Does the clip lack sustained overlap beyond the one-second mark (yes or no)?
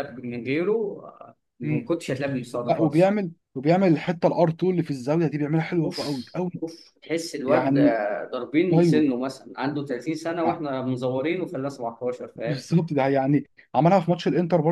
yes